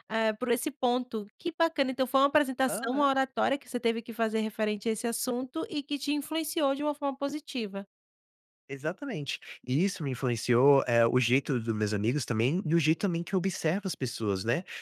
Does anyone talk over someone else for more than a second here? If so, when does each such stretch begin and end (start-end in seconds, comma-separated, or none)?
none